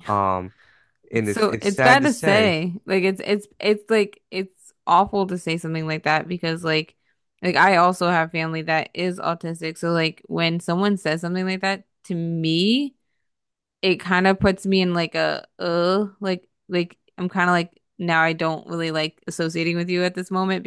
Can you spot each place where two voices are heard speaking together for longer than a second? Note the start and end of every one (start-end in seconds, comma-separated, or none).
1.2-2.6